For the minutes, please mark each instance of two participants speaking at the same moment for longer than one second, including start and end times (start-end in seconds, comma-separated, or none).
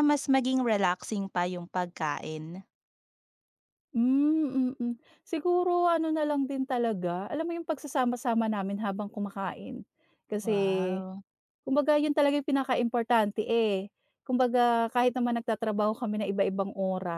none